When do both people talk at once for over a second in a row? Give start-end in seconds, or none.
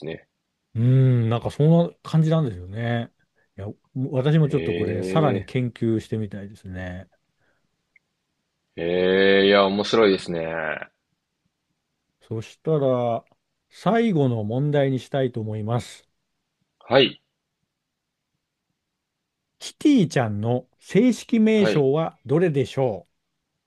none